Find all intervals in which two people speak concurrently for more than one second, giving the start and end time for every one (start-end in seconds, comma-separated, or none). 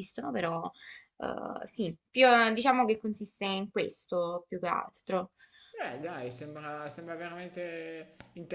none